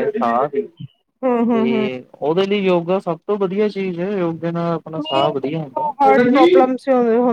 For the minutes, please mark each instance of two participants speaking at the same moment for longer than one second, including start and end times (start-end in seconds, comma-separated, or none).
5.0-6.6